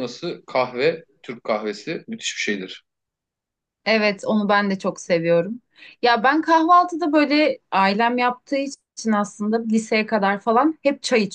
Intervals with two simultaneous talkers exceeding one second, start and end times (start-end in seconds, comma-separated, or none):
none